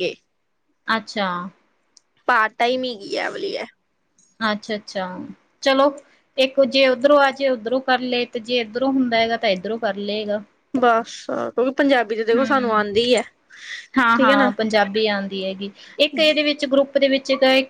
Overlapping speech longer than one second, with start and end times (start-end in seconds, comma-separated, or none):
none